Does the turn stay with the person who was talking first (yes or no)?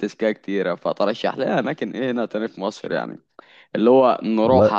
yes